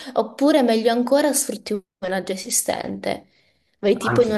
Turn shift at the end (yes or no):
no